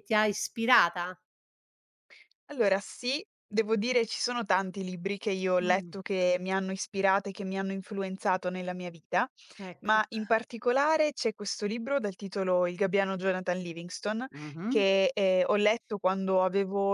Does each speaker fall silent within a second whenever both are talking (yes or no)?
yes